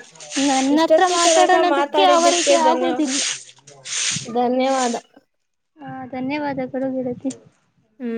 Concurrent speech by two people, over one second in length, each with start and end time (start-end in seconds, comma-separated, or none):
0.8-2.9